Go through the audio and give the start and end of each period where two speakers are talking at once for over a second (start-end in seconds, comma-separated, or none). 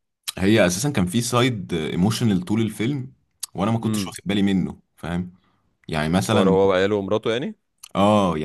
none